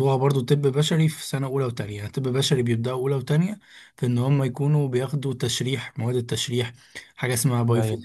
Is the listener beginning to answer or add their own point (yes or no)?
no